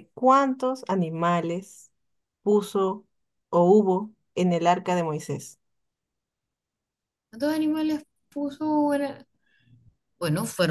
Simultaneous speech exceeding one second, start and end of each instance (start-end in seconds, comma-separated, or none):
none